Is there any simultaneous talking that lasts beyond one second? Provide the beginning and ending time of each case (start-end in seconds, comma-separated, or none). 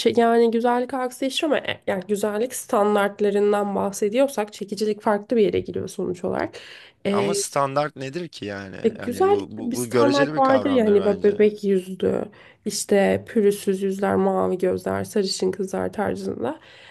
8.8-11.4